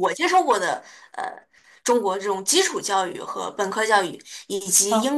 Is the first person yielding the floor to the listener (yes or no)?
no